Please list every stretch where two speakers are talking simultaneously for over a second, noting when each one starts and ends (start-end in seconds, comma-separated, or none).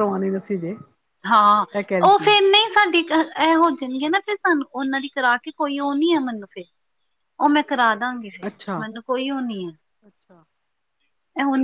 none